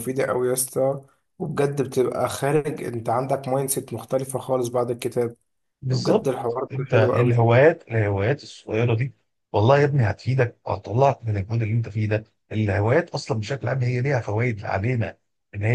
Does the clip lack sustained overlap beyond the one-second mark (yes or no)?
no